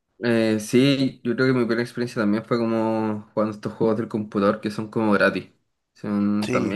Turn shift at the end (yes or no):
no